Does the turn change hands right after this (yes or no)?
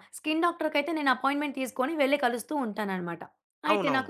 no